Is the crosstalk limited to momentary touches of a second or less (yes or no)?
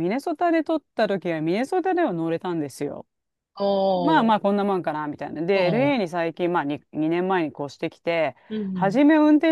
yes